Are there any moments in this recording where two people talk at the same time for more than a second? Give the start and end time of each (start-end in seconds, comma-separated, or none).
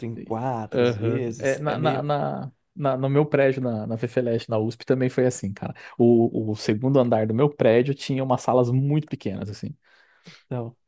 0.7-2.0